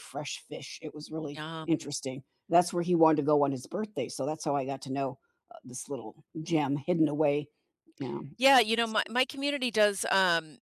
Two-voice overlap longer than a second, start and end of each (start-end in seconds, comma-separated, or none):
none